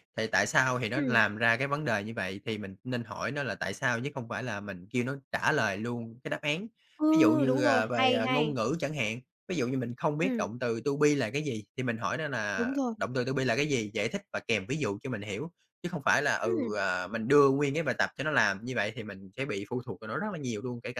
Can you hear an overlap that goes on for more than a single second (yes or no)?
yes